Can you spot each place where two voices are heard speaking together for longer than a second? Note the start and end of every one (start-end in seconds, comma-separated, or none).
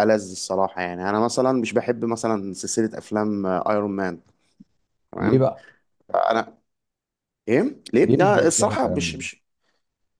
8.0-9.3